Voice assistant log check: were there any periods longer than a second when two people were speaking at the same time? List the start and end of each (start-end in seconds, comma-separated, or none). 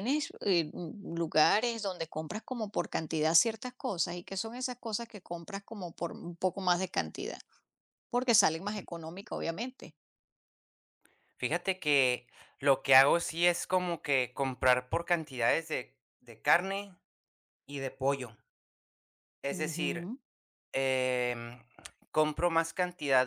none